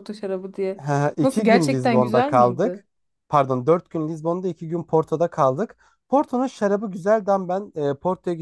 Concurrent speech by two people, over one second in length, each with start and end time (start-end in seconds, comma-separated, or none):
1.2-2.8